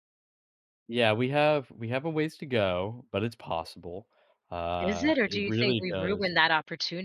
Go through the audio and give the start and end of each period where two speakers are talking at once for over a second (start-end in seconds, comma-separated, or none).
4.8-6.3